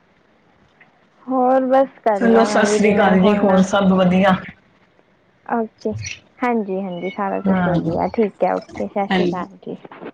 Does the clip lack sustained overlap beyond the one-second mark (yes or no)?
no